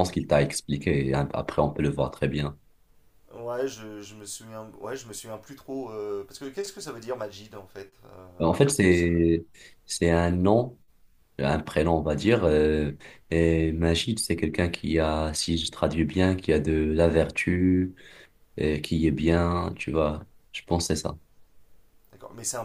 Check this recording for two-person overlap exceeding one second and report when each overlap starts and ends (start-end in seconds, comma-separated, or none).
none